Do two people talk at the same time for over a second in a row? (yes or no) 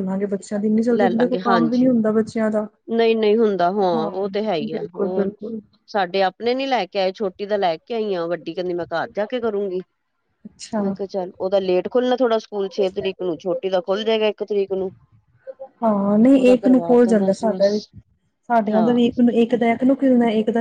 yes